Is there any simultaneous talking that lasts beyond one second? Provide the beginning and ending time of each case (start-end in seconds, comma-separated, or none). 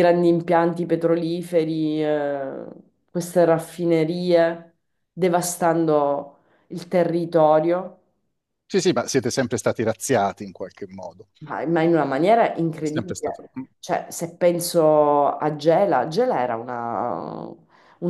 none